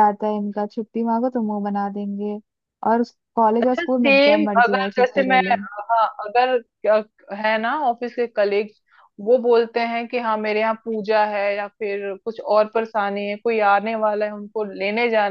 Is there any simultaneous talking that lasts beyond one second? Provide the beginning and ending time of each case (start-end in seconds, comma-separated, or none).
3.6-5.4